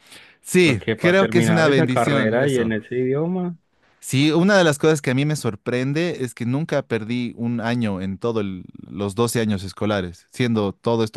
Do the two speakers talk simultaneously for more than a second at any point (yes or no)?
yes